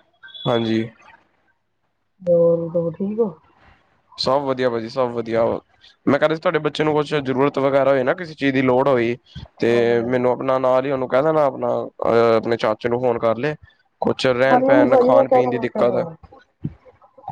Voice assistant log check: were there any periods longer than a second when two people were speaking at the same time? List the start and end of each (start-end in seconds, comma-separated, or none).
14.5-16.1